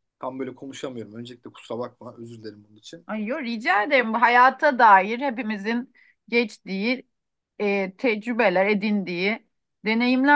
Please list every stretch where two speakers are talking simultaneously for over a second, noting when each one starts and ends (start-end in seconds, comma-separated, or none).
none